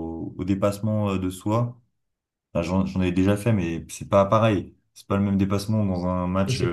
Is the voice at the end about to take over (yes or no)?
yes